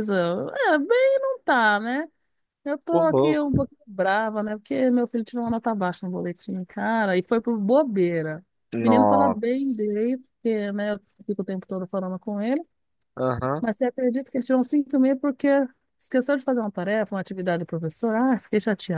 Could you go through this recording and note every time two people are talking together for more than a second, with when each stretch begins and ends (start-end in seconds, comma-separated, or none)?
8.7-9.9